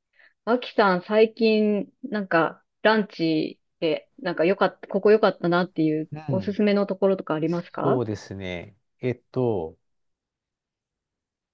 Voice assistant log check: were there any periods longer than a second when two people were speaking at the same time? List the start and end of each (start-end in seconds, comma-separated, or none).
none